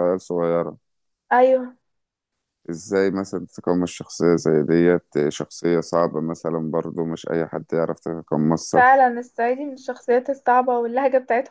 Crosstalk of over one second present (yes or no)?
no